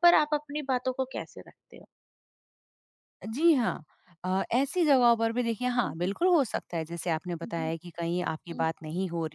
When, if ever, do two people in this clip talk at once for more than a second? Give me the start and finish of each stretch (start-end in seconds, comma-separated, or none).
none